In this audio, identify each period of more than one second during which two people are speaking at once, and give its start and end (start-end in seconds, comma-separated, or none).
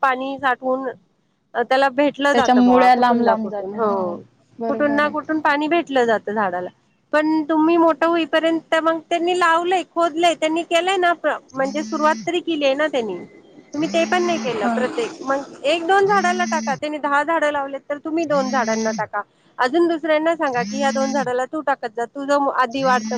2.3-3.9